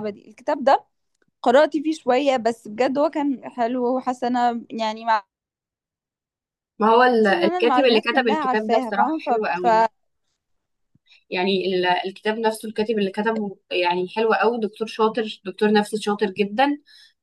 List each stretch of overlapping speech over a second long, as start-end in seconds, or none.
7.2-9.7